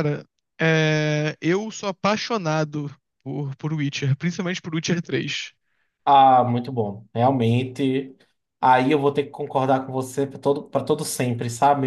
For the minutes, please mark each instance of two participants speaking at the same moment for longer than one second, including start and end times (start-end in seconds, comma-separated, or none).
none